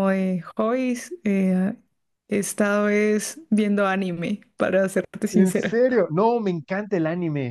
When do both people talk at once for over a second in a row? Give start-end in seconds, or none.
none